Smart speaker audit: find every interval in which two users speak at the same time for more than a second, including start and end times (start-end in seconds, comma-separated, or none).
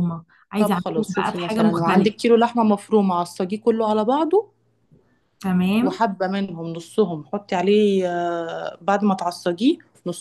0.6-2.2